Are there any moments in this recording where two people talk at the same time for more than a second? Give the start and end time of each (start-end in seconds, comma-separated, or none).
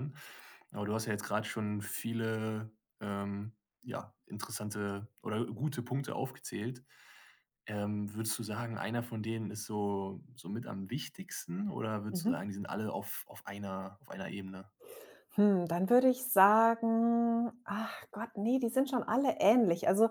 none